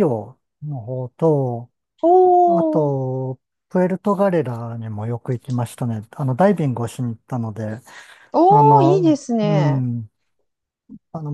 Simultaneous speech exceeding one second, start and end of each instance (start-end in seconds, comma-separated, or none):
8.5-9.8